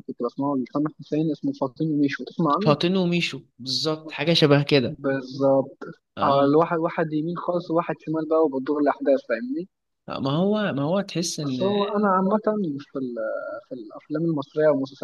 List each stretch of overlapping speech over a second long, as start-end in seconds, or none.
none